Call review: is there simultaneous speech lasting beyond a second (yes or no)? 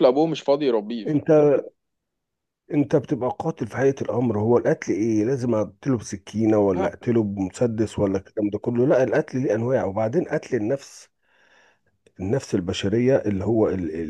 no